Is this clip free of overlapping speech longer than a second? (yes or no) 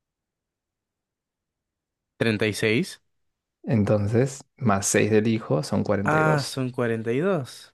yes